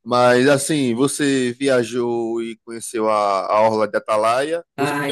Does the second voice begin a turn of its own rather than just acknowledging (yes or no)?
yes